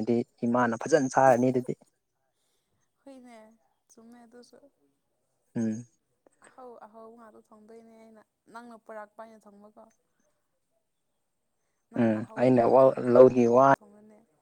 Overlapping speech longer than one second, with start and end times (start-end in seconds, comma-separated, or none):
11.9-13.8